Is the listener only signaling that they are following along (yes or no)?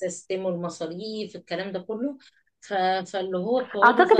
no